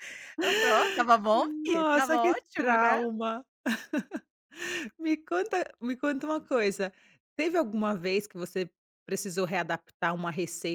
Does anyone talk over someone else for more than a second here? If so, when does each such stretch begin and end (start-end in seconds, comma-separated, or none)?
1.3-3.0